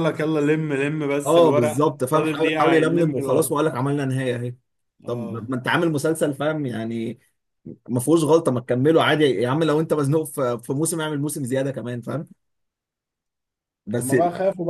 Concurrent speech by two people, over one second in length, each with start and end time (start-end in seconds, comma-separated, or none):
1.3-3.5